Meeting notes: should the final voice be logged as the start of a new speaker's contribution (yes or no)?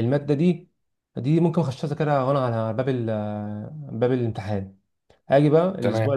no